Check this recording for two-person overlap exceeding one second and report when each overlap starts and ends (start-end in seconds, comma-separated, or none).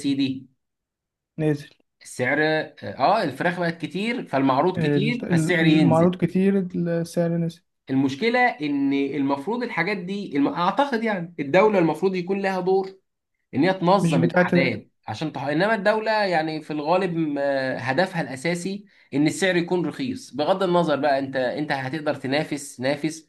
4.8-6.2